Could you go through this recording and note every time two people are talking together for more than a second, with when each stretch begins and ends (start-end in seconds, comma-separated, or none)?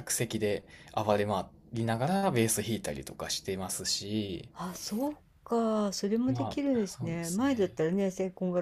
6.2-7.8